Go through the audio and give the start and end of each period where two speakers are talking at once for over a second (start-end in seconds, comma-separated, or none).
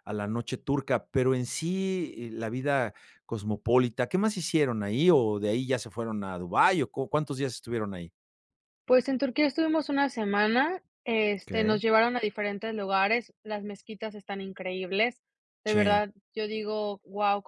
none